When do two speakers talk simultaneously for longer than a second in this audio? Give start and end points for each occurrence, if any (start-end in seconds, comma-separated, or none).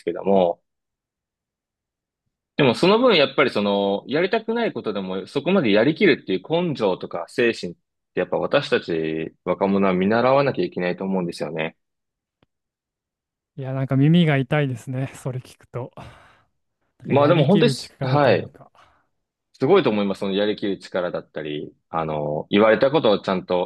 17.0-18.5